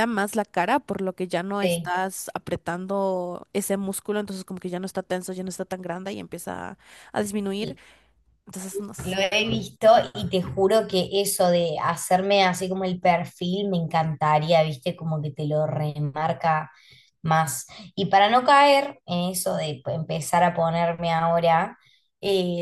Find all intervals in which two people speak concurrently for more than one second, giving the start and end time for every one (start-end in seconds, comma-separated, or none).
none